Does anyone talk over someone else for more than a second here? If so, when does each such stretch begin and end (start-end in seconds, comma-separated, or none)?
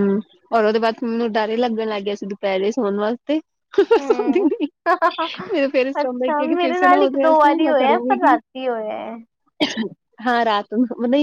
6.0-8.4